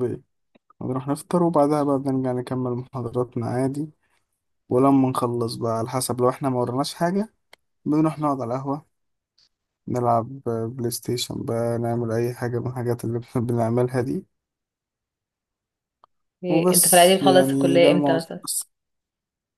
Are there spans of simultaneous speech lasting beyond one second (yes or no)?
yes